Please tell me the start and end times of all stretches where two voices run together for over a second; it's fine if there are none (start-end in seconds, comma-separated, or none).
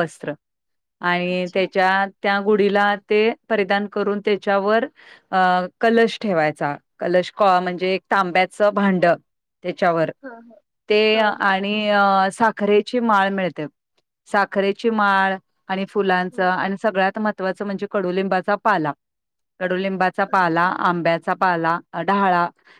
none